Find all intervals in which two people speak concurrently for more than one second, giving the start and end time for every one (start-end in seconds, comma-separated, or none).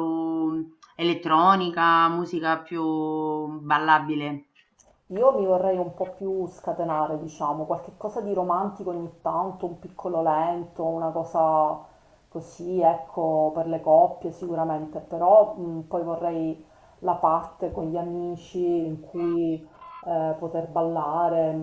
none